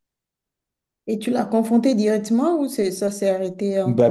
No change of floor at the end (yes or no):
no